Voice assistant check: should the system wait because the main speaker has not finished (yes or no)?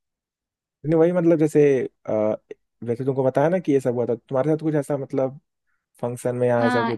no